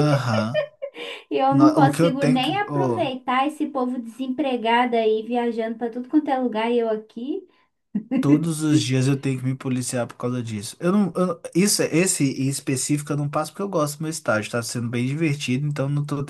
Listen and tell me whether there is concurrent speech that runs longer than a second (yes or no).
yes